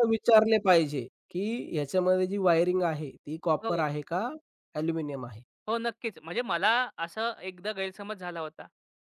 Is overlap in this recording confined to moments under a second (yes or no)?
yes